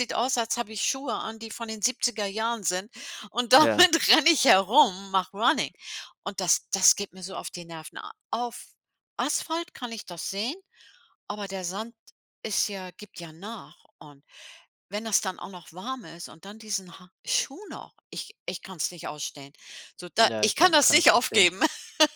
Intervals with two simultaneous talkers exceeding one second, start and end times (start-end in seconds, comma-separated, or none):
20.2-21.5